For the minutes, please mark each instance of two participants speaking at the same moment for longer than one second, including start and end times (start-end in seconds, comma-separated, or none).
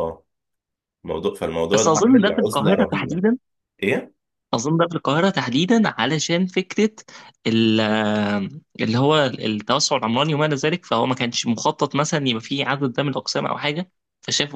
1.7-3.2